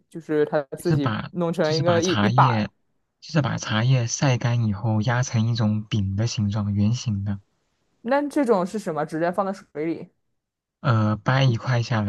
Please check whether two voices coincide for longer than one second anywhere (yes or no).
yes